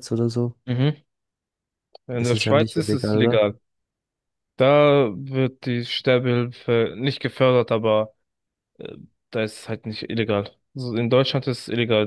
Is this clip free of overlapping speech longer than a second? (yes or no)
no